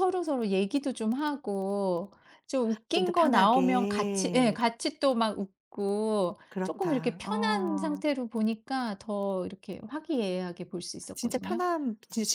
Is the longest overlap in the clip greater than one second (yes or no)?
yes